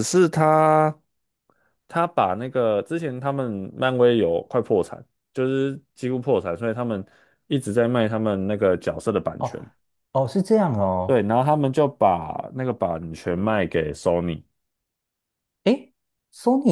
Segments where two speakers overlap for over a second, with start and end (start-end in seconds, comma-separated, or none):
none